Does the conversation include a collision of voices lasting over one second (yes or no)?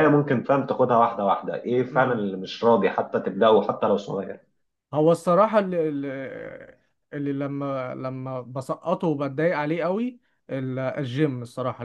no